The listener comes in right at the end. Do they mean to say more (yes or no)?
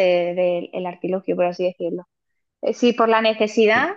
no